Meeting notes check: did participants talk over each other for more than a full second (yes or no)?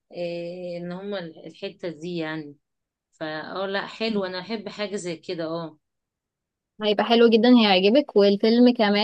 no